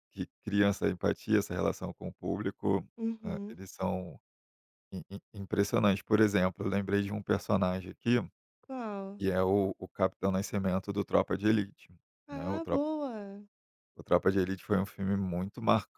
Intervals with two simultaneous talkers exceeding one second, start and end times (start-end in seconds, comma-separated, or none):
none